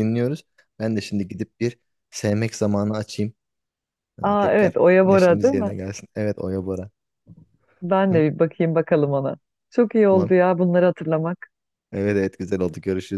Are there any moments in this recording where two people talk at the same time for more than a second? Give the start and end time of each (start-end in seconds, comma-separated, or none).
4.2-5.7